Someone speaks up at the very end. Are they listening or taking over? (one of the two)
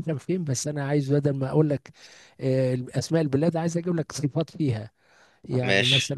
listening